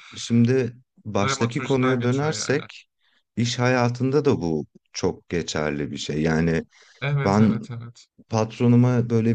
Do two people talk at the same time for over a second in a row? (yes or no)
yes